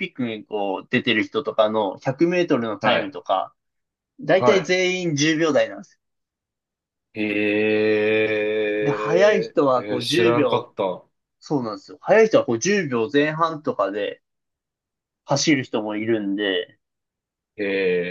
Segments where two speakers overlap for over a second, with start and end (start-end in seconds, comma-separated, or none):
8.8-10.8